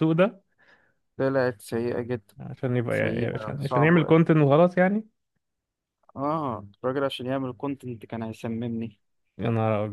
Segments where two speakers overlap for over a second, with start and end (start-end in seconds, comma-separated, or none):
2.9-4.1